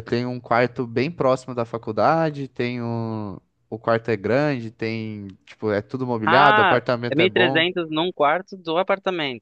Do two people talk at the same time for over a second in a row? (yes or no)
yes